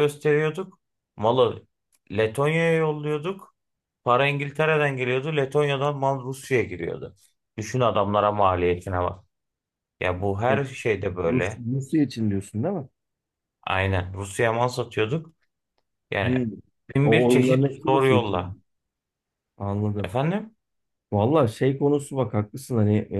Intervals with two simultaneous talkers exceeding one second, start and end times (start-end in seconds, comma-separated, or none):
17.0-18.6